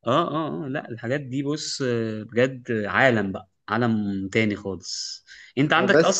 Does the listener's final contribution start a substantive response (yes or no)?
no